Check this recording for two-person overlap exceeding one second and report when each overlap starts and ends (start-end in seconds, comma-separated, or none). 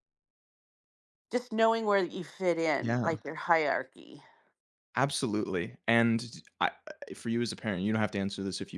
none